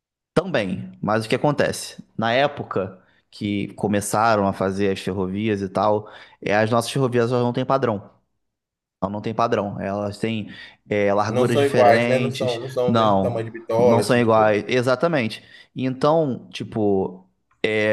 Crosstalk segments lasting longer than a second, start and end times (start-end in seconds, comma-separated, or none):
11.3-14.6